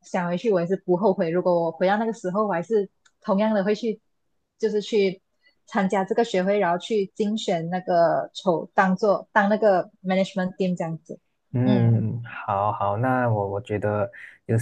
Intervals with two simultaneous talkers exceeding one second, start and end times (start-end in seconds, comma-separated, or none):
none